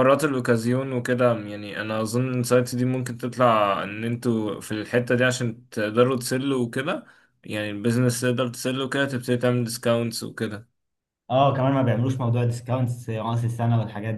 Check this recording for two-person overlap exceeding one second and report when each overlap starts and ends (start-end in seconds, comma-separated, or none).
none